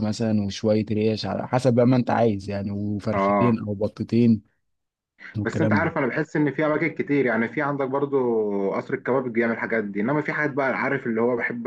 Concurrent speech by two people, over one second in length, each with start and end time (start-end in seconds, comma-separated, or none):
none